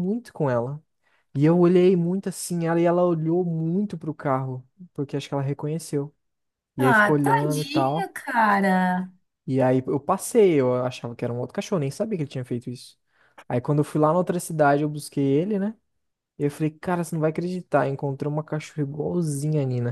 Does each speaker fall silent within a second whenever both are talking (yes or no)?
no